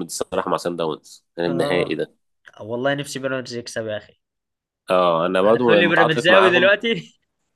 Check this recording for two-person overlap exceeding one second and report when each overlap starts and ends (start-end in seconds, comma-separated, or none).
5.4-6.7